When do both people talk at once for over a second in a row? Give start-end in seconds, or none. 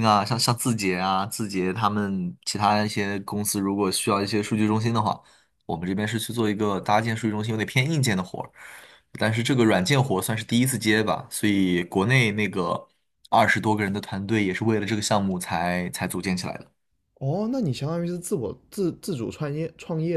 none